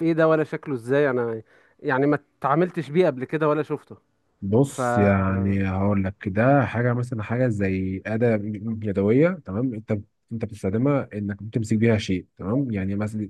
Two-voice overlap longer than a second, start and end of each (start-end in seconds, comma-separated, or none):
none